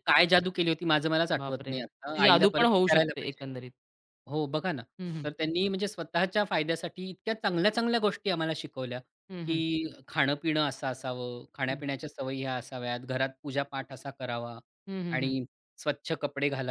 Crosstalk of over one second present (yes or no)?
yes